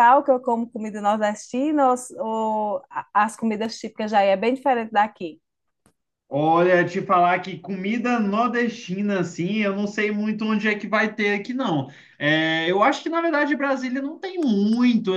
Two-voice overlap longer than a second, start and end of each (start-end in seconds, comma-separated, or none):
none